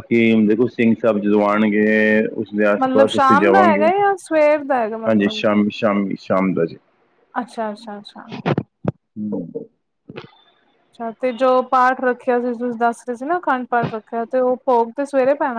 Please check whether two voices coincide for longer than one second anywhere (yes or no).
no